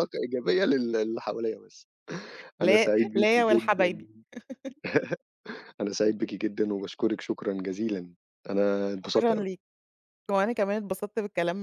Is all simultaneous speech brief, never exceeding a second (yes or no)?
no